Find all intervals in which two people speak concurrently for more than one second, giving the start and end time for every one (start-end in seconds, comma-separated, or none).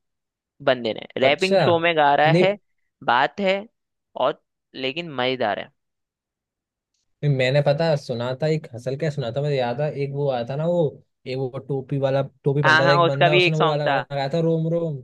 12.6-14.0